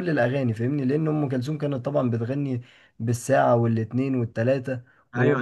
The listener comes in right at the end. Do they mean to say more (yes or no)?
yes